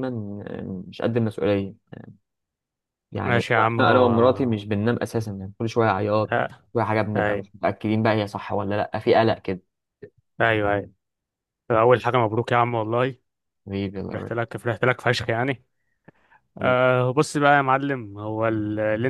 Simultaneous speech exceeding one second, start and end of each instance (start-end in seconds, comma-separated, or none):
3.2-4.6